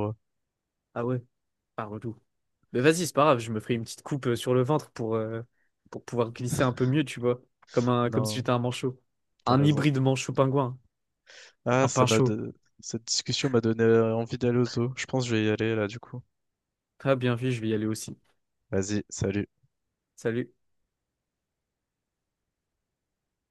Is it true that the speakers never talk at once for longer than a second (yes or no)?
yes